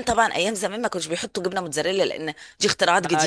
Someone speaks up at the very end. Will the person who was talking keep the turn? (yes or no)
no